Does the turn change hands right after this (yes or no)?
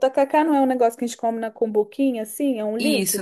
yes